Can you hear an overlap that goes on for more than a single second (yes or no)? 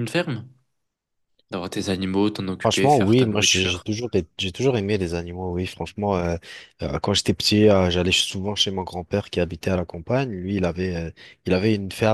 yes